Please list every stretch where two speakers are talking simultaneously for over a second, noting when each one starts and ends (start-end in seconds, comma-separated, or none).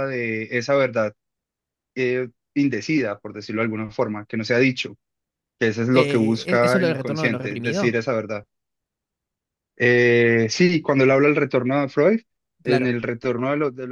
5.9-8.0